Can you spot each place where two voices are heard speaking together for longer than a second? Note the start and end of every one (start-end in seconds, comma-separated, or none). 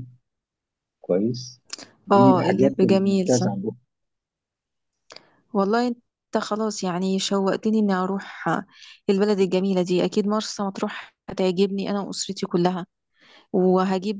2.1-3.5